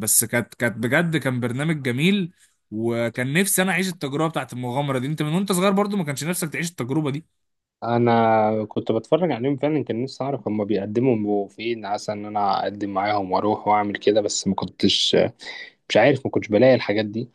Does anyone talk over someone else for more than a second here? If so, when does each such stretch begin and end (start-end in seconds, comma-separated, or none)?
none